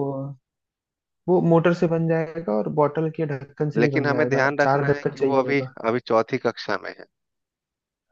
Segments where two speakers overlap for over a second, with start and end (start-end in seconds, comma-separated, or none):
3.8-5.7